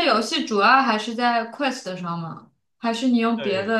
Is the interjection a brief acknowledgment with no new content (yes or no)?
yes